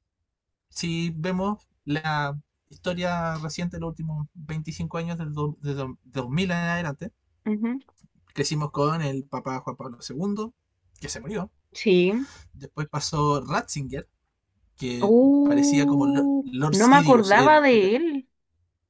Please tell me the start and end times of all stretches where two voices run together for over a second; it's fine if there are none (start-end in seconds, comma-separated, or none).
15.0-17.7